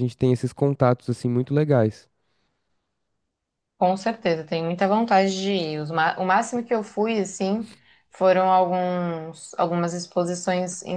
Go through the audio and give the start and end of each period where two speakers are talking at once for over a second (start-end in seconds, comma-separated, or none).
none